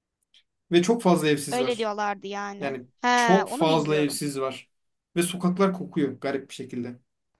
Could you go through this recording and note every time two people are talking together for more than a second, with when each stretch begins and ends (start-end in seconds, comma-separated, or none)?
2.6-4.2